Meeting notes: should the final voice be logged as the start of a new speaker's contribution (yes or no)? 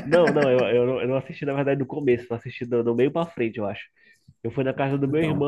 no